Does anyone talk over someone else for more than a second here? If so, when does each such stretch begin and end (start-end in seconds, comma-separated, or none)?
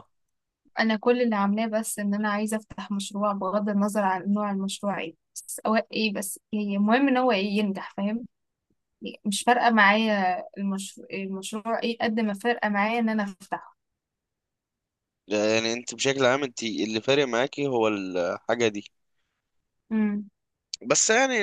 none